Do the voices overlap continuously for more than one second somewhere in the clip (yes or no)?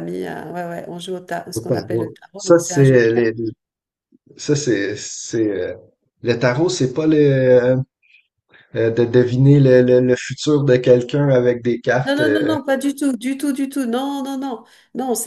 yes